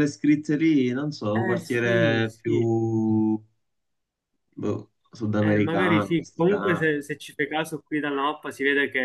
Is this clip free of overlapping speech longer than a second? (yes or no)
no